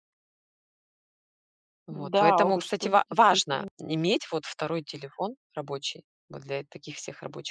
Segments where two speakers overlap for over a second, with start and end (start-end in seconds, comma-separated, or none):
1.9-3.7